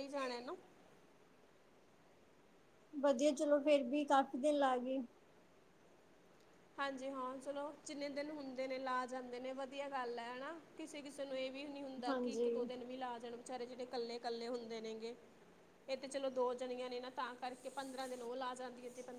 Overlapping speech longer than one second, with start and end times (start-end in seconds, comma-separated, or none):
none